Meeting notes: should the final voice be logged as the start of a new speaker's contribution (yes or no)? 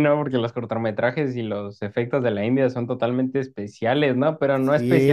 yes